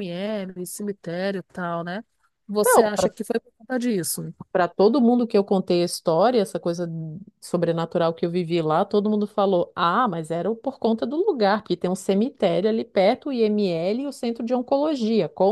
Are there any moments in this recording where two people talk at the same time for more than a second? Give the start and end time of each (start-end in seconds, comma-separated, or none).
none